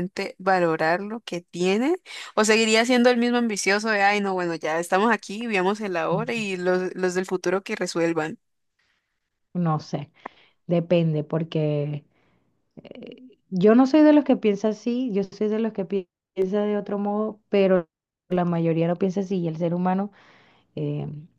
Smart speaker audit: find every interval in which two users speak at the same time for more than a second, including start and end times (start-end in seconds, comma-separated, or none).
none